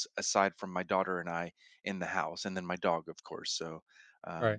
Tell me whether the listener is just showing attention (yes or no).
no